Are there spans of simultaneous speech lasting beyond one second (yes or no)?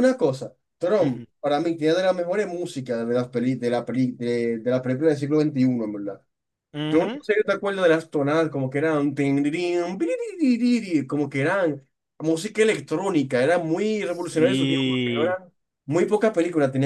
yes